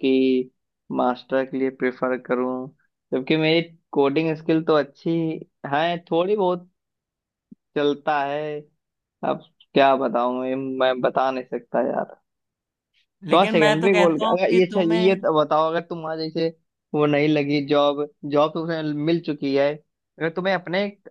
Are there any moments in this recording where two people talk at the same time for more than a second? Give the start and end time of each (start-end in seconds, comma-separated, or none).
13.3-15.2